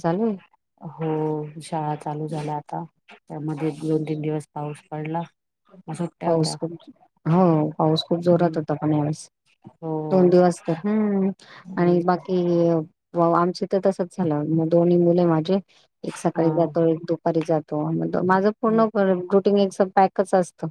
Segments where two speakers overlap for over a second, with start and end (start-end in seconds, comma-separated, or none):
none